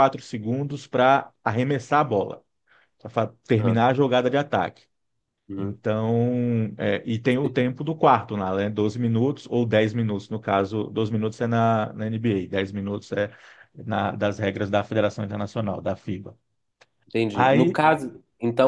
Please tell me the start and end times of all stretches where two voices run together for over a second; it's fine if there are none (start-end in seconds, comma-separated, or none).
none